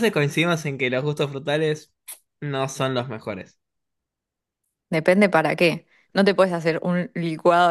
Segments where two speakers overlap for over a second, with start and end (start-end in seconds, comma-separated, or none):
none